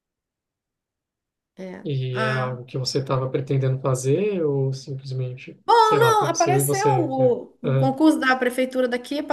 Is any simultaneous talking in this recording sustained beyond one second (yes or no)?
yes